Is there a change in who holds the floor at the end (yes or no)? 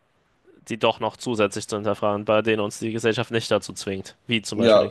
yes